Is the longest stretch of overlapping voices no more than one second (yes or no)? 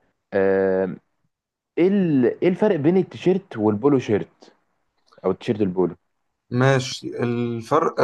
yes